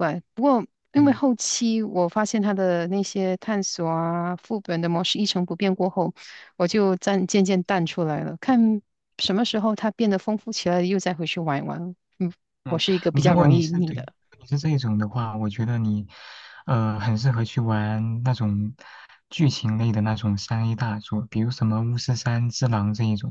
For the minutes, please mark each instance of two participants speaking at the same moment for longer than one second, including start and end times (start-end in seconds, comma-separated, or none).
12.7-14.1